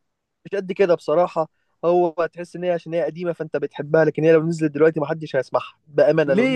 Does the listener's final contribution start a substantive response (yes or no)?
yes